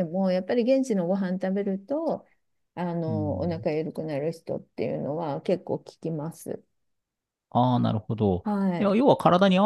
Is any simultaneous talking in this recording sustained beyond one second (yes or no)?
no